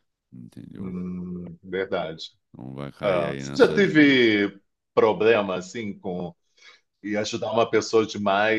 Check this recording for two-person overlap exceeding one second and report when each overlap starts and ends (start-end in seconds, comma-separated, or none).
3.0-4.4